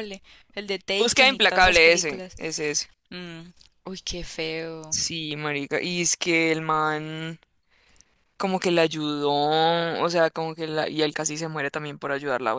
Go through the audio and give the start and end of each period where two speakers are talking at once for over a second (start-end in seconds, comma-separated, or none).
1.0-2.3